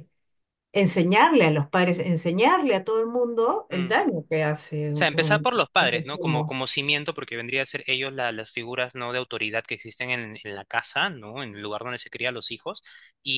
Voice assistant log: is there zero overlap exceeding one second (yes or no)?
no